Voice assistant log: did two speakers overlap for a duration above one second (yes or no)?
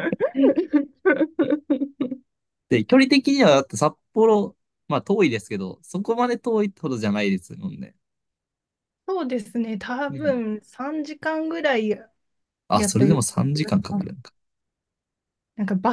yes